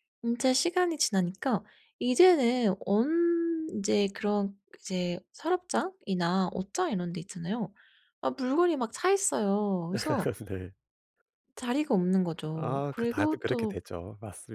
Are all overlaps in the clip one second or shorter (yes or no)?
no